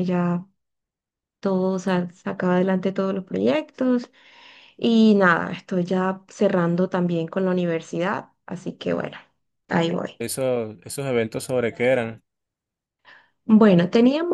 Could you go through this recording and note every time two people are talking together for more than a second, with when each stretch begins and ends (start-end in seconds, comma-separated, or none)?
none